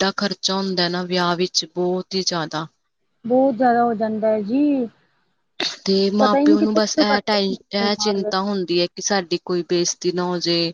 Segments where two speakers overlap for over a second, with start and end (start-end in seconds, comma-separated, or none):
6.2-7.5